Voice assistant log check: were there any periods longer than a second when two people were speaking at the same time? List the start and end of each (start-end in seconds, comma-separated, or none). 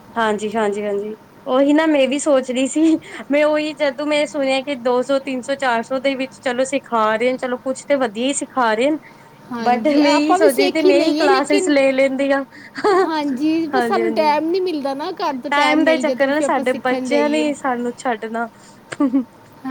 9.7-11.7, 15.8-17.5